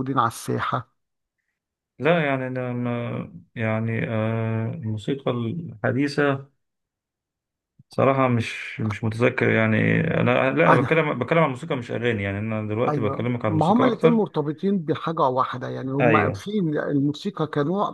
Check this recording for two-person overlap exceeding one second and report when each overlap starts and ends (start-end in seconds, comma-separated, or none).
12.9-14.3